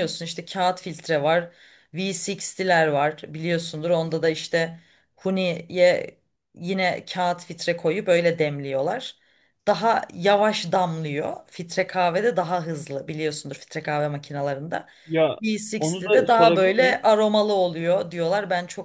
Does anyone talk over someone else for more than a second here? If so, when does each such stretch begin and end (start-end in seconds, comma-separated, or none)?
15.8-17.1